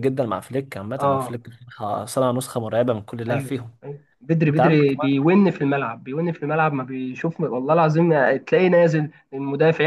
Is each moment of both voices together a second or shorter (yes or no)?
yes